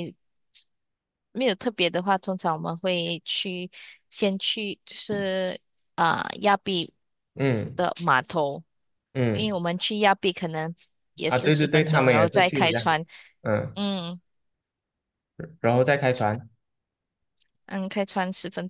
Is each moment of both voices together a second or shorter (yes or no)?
no